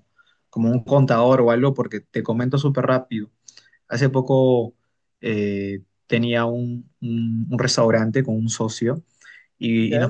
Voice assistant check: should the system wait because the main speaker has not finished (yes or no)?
yes